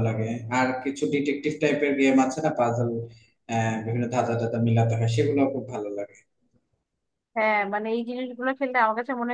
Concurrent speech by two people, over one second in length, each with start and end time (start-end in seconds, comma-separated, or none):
none